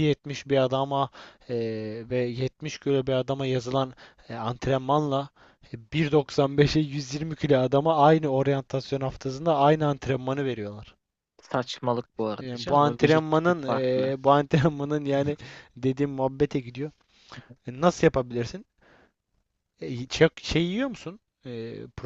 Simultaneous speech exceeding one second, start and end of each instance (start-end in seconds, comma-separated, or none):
12.4-14.2